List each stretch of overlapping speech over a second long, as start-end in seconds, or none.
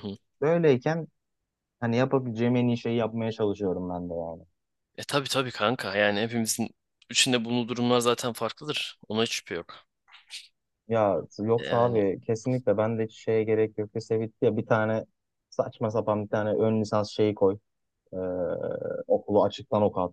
none